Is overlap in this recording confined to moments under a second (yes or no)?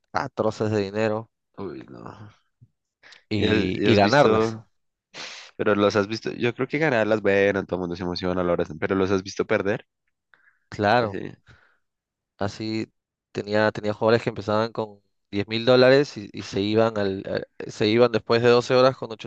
no